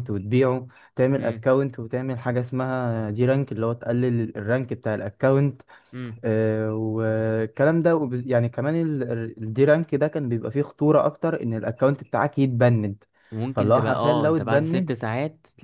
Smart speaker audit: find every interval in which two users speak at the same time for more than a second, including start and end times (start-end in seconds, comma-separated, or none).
13.5-15.0